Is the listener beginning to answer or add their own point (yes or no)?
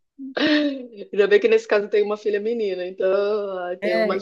yes